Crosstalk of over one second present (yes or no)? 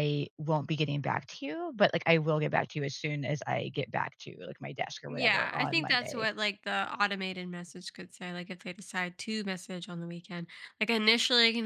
yes